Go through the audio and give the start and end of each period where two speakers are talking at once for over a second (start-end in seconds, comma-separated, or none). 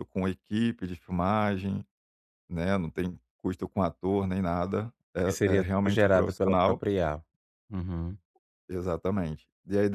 5.2-6.8